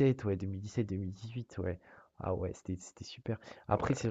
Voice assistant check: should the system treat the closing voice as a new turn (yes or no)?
no